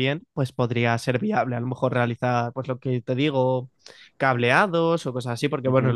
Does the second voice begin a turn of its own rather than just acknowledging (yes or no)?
no